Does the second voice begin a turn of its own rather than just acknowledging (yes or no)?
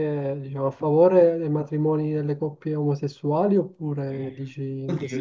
yes